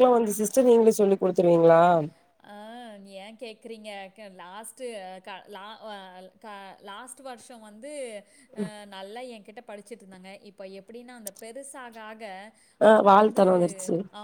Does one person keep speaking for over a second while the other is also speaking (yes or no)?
no